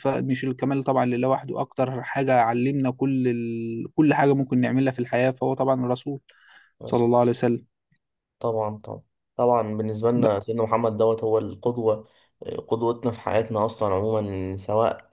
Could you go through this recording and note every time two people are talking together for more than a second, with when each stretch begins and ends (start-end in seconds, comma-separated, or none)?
none